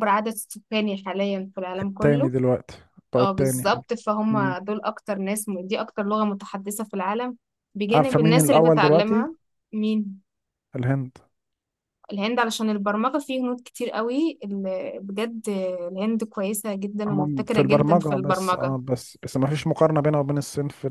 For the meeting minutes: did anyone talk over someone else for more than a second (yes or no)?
yes